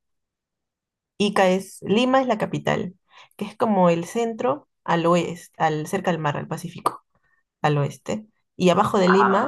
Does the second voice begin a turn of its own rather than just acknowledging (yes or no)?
no